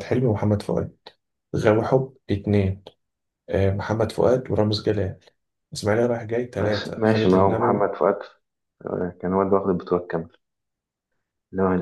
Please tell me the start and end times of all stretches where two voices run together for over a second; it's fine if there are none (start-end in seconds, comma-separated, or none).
6.5-7.9